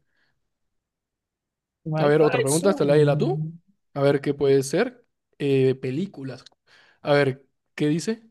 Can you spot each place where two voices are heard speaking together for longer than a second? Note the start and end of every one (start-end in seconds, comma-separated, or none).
2.0-3.5